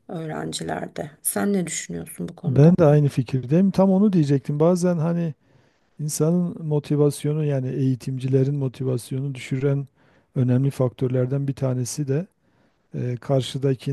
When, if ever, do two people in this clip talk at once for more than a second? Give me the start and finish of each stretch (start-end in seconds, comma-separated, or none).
none